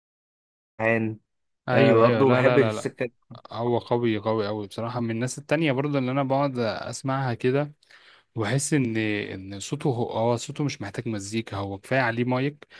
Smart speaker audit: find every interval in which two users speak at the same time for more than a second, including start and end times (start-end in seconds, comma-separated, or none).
1.7-2.9